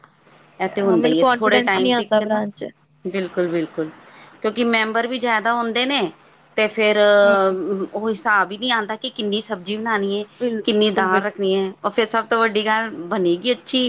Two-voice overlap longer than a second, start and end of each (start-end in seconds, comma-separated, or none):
0.9-2.4